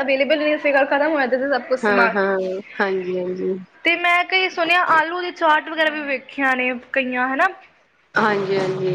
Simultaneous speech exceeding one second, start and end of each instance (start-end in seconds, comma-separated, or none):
none